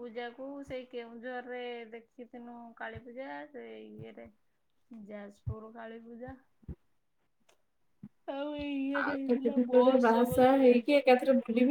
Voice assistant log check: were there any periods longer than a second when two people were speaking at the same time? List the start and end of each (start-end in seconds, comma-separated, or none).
9.0-11.1